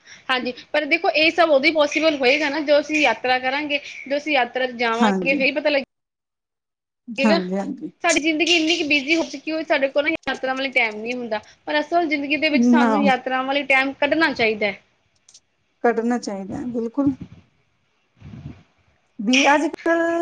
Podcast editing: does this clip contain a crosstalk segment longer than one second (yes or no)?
no